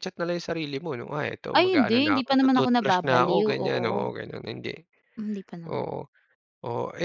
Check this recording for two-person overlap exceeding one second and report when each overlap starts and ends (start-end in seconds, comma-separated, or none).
1.5-4.1